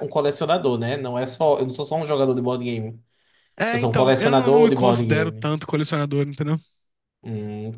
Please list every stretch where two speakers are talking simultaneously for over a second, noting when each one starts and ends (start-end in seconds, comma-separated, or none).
3.7-5.5